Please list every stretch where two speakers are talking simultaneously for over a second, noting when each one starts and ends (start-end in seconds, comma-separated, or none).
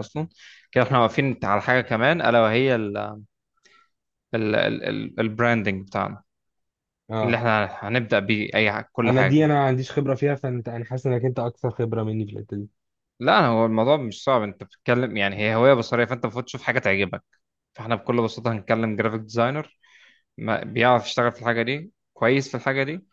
none